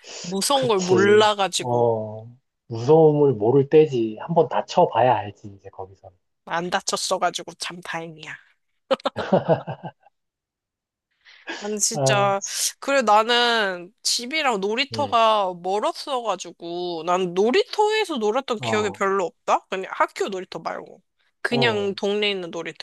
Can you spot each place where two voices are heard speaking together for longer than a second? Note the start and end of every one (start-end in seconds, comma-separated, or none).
0.5-1.9